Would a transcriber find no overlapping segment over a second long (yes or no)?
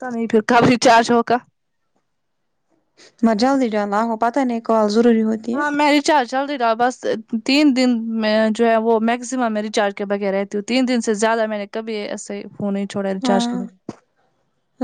yes